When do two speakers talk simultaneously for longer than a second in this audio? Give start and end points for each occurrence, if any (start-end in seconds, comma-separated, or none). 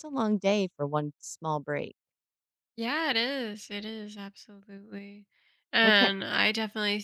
none